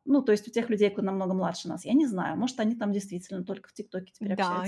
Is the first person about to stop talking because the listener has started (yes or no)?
yes